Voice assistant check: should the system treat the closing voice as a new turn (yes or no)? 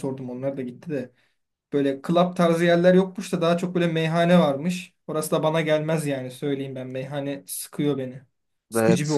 yes